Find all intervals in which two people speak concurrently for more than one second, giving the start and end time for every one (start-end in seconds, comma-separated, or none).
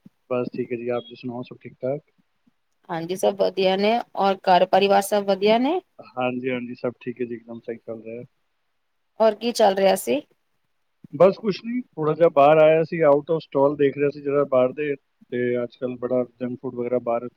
none